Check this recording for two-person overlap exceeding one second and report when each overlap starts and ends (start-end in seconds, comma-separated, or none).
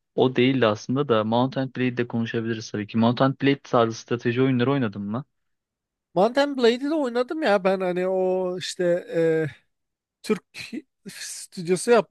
none